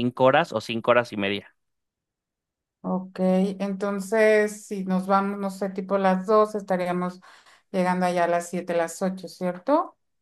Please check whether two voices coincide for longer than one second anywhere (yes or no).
no